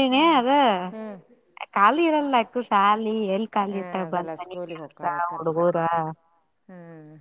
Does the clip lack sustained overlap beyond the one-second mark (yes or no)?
no